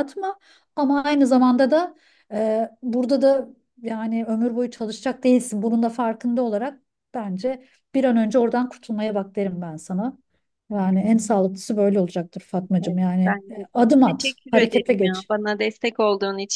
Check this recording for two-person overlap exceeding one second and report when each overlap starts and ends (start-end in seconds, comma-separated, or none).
12.8-15.3